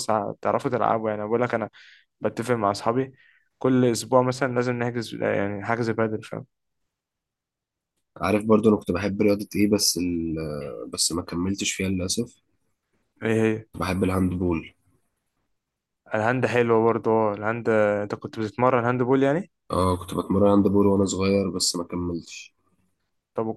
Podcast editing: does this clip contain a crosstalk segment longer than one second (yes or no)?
no